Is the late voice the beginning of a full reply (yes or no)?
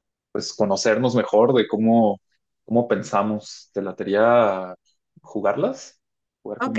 yes